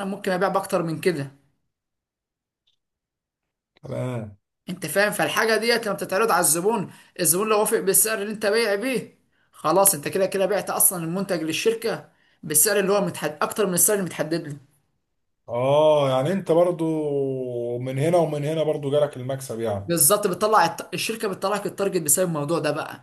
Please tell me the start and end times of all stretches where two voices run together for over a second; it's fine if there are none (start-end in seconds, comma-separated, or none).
none